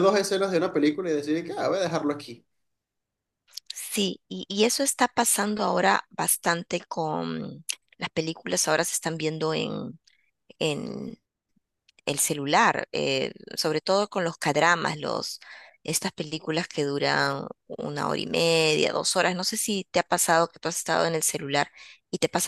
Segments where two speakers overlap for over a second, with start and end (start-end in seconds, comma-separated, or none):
none